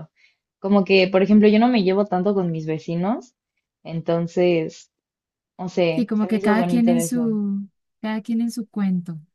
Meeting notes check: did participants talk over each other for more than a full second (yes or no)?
yes